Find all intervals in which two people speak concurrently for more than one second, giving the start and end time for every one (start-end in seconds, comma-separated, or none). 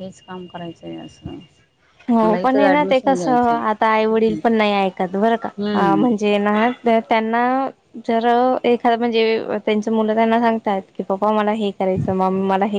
2.2-4.4